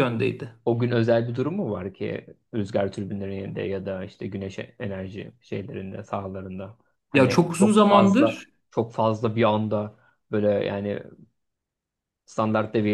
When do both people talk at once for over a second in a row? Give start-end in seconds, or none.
7.1-8.5